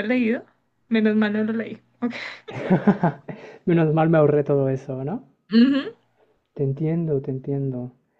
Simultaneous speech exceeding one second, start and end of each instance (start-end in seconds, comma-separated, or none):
none